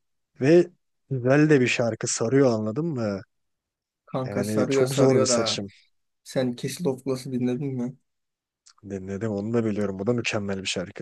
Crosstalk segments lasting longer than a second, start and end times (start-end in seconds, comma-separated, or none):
4.2-5.6